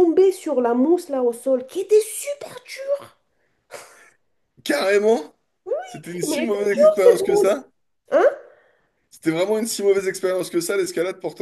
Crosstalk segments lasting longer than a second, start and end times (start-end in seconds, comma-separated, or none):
6.3-7.6